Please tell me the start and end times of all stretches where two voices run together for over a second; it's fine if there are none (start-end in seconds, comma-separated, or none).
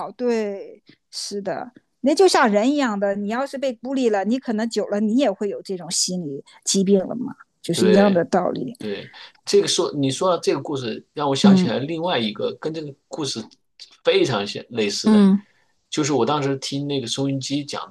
none